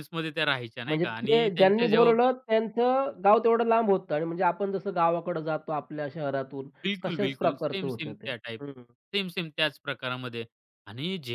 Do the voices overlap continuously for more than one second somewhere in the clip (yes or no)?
yes